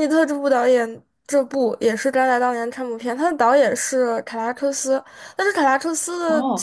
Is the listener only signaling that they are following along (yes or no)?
no